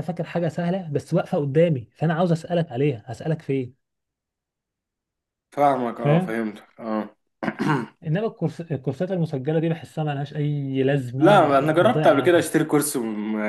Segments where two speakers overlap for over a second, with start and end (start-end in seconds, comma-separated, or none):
11.2-12.4